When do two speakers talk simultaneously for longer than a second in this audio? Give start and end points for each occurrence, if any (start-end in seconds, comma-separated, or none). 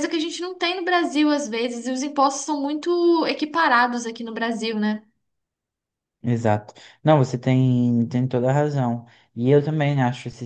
none